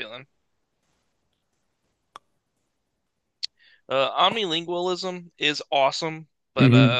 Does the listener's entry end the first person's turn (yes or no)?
yes